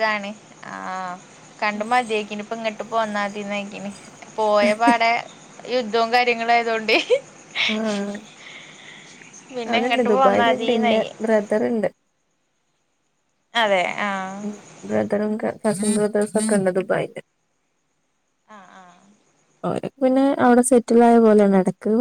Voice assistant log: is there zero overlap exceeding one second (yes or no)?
no